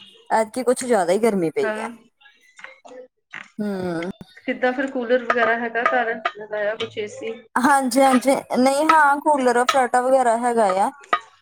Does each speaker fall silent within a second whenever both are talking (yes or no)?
yes